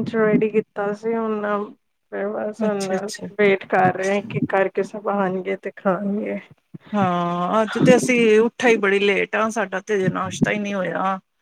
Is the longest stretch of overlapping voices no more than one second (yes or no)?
yes